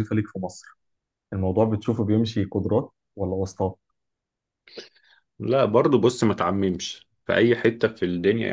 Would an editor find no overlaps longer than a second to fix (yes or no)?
yes